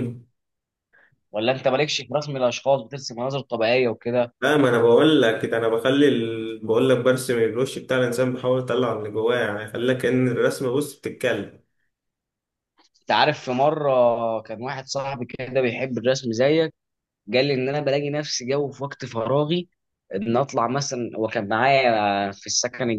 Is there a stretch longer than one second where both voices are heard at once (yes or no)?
no